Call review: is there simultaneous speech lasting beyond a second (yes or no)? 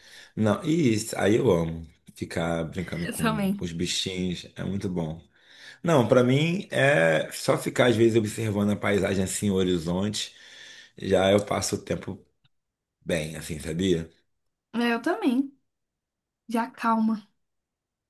no